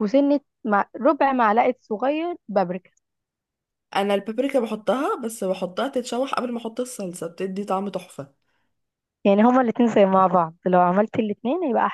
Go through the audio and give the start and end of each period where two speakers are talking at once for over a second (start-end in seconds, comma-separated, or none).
none